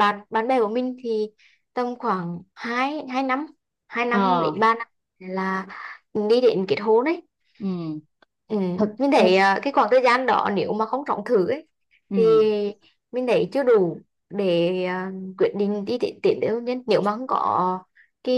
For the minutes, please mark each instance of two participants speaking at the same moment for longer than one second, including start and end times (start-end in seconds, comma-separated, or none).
none